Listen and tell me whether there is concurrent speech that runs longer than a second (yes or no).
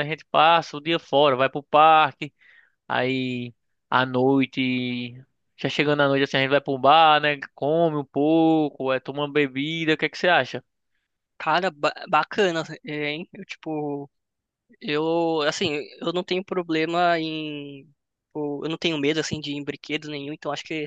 no